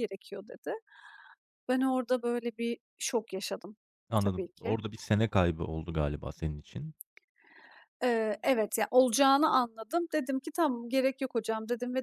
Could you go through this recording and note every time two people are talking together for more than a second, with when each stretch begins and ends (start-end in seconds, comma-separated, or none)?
none